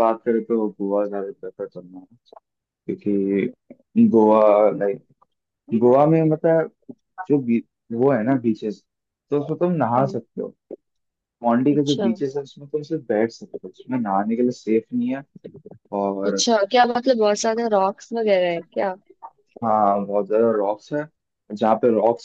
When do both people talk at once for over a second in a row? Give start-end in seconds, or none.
none